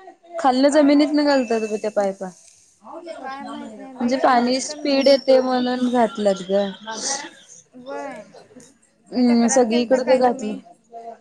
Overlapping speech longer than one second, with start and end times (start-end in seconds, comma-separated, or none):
3.2-4.8, 9.1-10.5